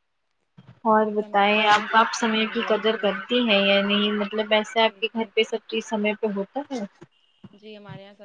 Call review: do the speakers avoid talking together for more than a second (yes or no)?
no